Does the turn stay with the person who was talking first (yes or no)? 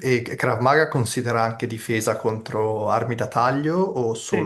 no